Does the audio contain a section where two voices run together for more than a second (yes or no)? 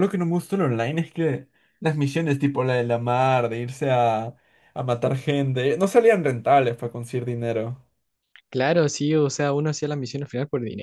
no